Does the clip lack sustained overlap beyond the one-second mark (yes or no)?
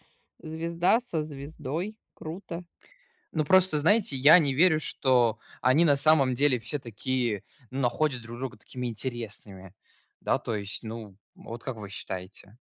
yes